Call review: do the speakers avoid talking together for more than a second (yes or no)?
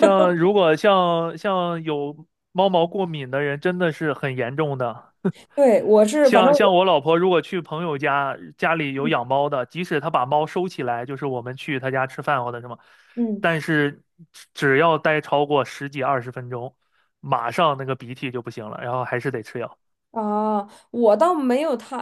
yes